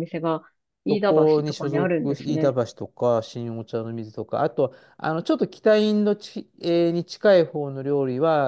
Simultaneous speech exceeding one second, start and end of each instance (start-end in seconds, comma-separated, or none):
0.9-2.6